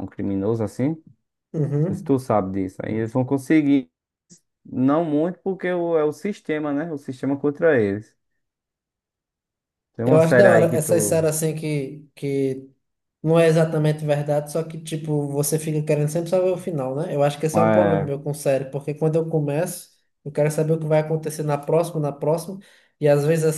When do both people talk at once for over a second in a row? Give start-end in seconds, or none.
10.0-11.3